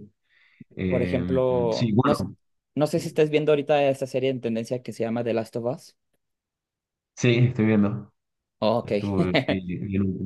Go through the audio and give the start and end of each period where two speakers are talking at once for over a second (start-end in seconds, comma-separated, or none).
0.9-2.3